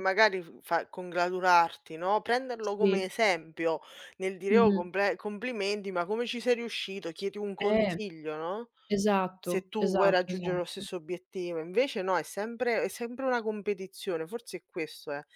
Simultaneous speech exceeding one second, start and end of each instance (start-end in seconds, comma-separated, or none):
9.4-10.8